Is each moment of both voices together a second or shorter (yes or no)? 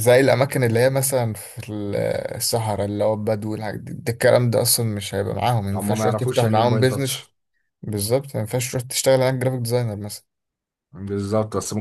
no